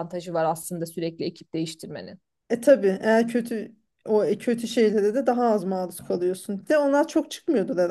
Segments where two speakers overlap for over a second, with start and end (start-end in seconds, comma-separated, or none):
none